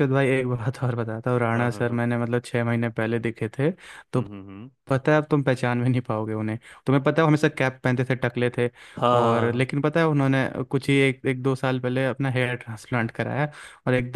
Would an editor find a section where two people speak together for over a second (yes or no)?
no